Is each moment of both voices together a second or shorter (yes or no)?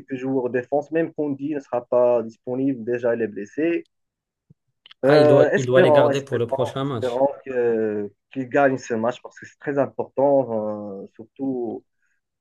no